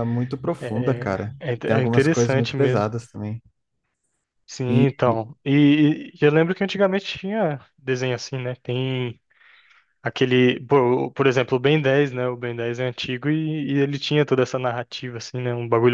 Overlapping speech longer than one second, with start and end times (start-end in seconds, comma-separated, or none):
0.6-2.9